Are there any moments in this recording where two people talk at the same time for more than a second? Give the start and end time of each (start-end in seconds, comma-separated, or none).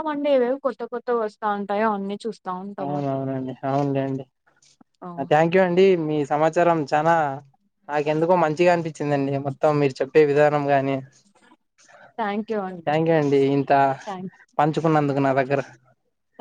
none